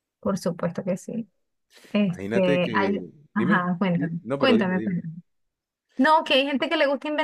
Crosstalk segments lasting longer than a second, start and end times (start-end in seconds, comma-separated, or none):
2.1-5.0